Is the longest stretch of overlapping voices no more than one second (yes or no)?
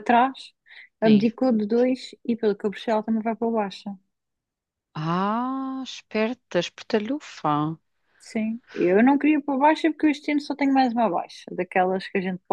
yes